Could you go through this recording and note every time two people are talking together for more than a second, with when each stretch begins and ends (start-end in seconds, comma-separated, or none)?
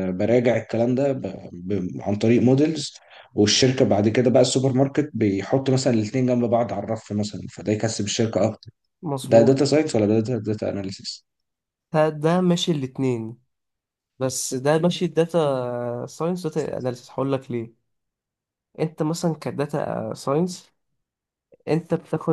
none